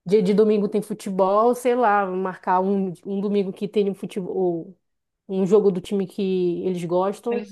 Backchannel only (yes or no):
yes